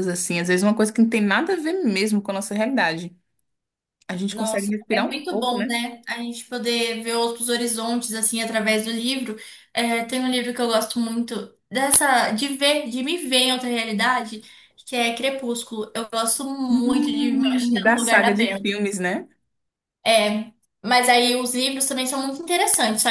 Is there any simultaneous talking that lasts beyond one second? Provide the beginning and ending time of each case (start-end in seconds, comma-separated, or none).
4.3-5.8, 16.7-18.7